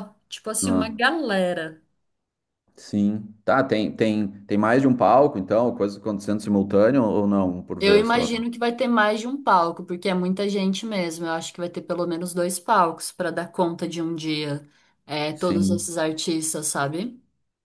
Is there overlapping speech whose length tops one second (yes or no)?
no